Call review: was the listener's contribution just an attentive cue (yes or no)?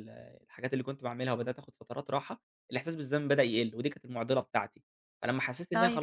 yes